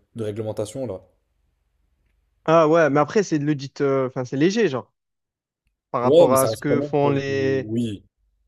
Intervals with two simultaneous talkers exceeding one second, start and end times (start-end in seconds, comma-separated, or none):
6.0-7.7